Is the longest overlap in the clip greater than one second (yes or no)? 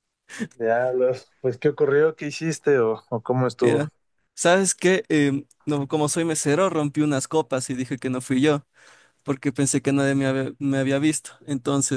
no